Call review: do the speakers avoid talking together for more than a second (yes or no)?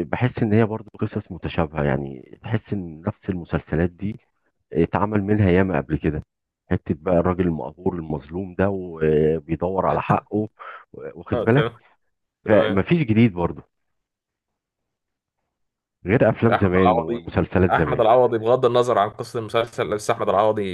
no